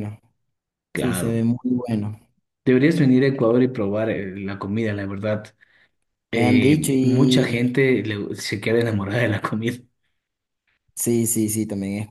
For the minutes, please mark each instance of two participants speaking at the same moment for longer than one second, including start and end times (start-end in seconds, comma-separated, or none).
6.3-7.7